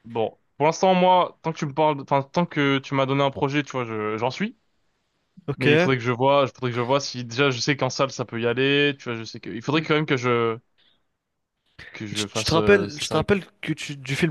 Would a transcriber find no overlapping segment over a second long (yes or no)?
no